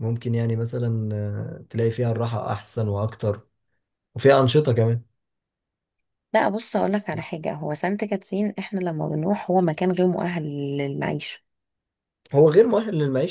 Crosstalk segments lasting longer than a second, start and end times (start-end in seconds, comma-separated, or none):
none